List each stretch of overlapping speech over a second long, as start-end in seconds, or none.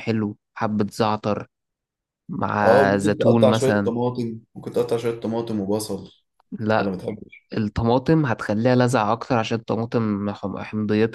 2.6-3.9